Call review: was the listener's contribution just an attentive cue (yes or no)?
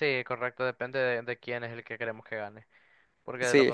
yes